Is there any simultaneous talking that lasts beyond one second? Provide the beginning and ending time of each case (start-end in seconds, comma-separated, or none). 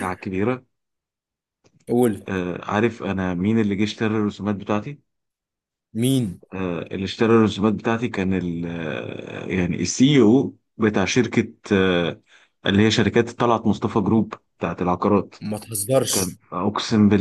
none